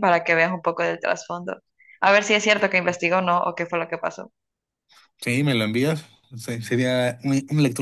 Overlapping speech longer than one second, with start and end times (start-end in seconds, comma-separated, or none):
none